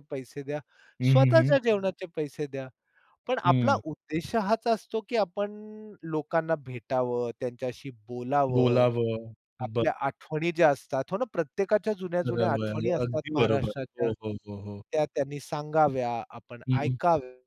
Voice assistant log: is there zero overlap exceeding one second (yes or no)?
no